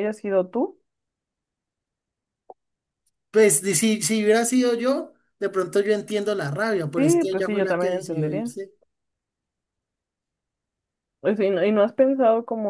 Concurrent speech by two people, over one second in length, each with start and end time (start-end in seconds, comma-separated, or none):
6.9-8.5